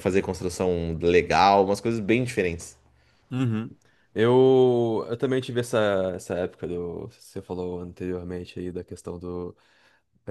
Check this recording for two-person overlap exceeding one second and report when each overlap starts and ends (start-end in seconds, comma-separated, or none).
none